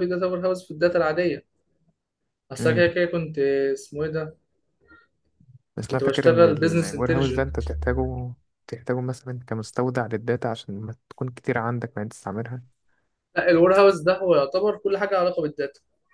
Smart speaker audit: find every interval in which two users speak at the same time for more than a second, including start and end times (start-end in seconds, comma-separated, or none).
5.9-7.6